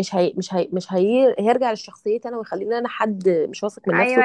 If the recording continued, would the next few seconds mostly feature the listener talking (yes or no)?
yes